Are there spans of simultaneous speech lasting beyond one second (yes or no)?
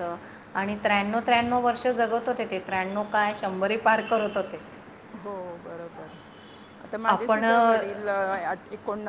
no